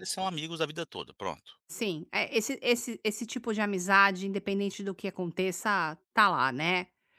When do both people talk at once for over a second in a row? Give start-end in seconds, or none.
none